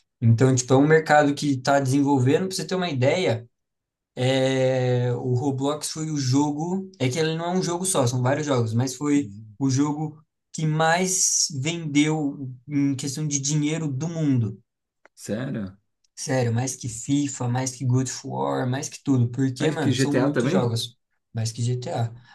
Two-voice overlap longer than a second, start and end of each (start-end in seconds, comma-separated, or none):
19.6-20.8